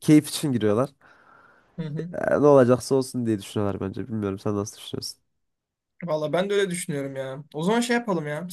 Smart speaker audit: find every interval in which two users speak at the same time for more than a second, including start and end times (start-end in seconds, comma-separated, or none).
none